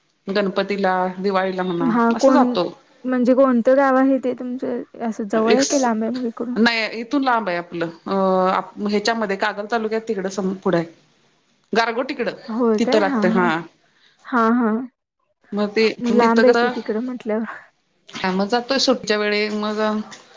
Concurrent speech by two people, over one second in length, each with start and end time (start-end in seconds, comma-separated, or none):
none